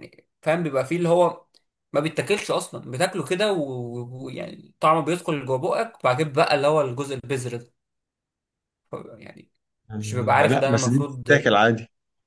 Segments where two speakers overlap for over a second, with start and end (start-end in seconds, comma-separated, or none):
10.0-11.3